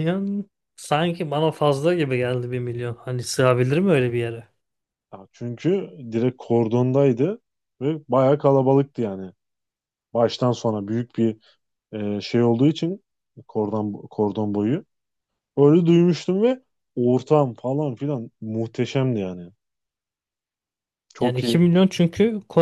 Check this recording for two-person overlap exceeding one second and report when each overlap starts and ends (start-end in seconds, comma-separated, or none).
none